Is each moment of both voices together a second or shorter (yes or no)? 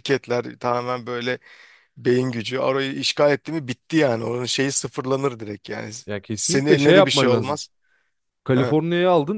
no